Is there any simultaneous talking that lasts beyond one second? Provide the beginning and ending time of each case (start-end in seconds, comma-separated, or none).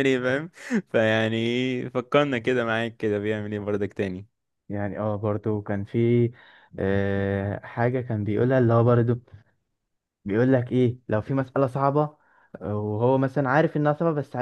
none